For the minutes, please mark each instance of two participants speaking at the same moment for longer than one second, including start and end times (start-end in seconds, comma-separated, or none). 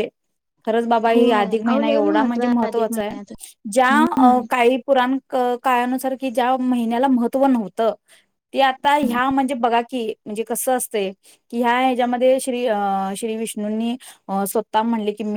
1.1-3.1